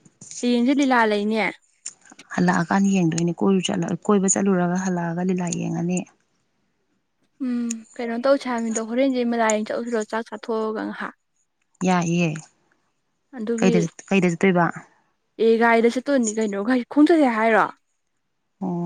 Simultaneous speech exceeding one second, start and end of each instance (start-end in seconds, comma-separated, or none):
none